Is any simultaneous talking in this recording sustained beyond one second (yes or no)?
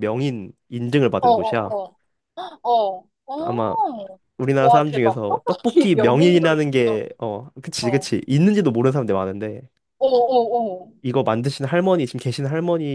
yes